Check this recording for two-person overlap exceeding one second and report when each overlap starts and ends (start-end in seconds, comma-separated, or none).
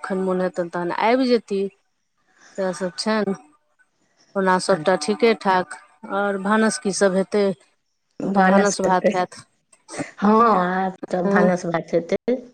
none